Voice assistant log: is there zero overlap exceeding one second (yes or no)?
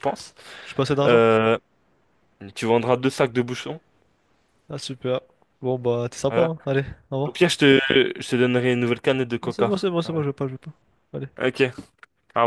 yes